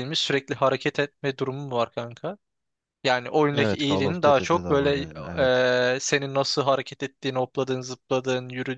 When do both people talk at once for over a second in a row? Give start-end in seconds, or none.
3.5-5.0